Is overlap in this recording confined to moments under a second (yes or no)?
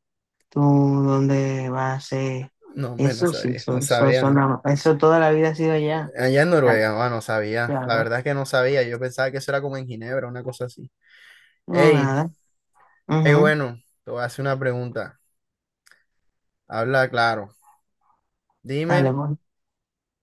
no